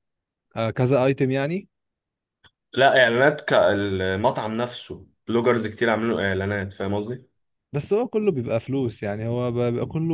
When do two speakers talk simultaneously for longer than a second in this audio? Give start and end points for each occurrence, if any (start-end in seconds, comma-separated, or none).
none